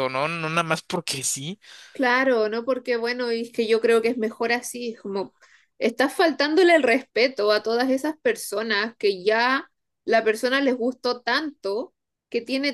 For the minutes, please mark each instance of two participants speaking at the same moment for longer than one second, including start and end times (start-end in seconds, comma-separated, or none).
none